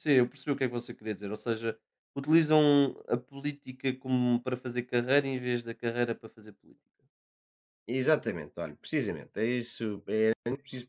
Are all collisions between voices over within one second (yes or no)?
yes